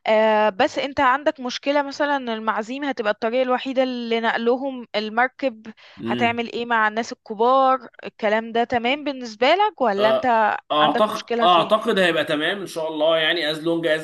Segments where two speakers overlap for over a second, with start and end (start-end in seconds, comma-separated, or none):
10.0-11.7